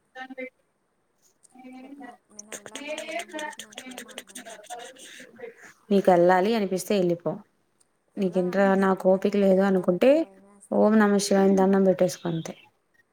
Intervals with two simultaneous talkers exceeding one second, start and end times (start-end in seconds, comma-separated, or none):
8.2-10.1